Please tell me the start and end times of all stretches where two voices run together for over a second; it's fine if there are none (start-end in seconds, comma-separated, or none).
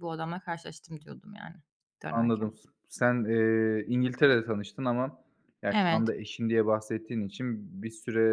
none